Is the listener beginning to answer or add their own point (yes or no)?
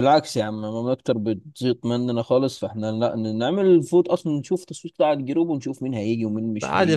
yes